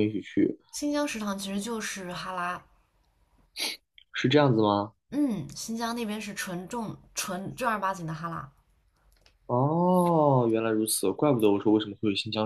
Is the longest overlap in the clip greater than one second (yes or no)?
no